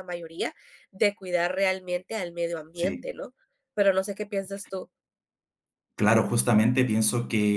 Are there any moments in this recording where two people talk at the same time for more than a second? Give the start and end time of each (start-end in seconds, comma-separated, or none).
none